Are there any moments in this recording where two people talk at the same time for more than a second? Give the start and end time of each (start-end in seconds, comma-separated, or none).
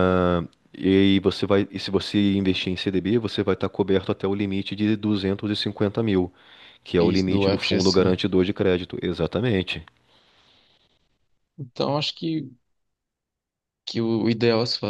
7.0-8.2